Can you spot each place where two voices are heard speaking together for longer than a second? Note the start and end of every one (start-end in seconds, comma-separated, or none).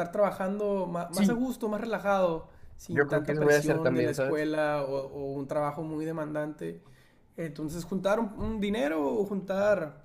2.9-4.5